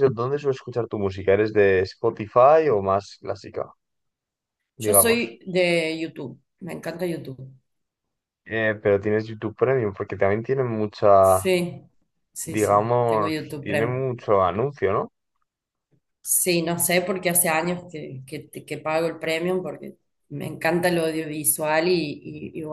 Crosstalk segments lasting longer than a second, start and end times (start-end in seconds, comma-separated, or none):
12.4-14.0